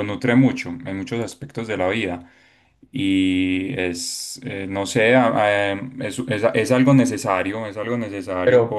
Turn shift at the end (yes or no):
yes